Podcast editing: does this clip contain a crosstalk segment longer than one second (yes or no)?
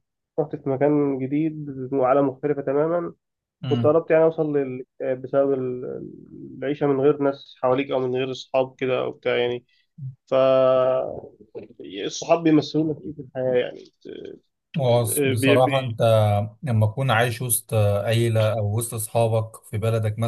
no